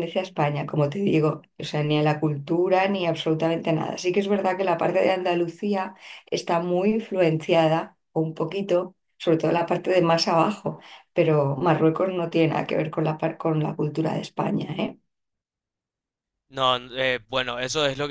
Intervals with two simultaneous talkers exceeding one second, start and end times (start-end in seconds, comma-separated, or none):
none